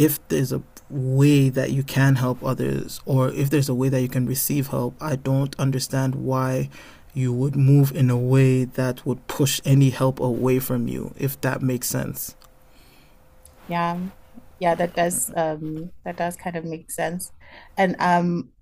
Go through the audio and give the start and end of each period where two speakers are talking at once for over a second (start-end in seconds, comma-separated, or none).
none